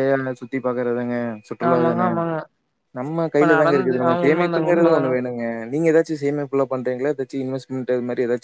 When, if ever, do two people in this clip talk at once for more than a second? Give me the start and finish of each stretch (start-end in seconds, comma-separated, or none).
3.4-5.0